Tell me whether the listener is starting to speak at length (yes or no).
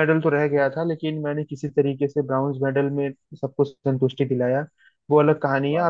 no